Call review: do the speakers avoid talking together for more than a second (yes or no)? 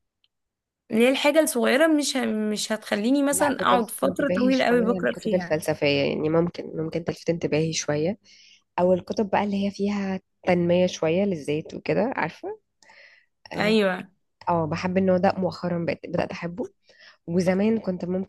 no